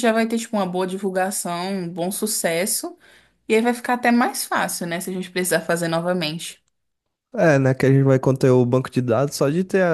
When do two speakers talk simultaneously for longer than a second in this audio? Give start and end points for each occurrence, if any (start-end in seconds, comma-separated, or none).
none